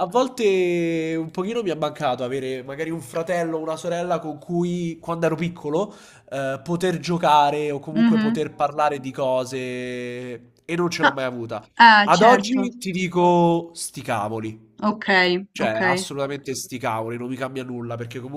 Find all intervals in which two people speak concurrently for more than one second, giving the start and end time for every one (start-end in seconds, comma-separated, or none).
none